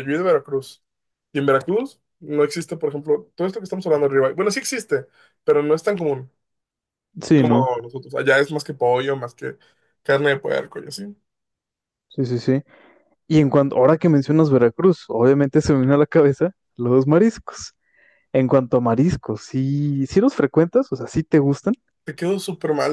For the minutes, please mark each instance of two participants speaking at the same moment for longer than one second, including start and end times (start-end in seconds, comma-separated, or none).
none